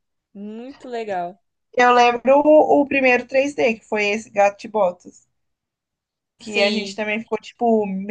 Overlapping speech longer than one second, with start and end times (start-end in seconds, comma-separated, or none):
none